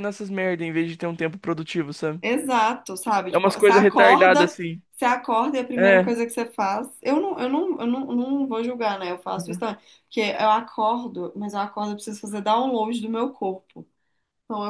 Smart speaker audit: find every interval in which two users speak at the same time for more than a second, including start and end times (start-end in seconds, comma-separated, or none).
3.3-4.5